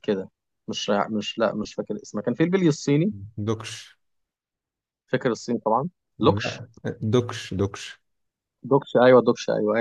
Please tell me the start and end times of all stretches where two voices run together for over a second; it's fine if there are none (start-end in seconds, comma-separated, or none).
none